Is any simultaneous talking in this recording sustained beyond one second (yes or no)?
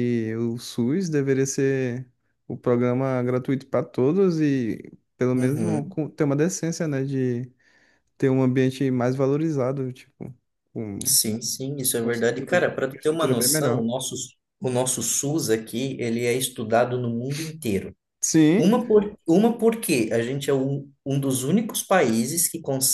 yes